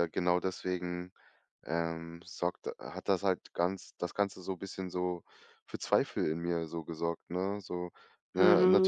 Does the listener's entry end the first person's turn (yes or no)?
yes